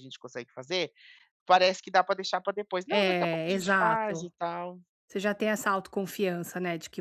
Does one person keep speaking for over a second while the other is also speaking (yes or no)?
yes